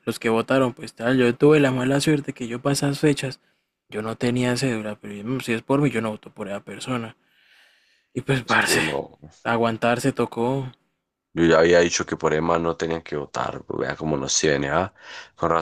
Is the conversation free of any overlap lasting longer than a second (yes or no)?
yes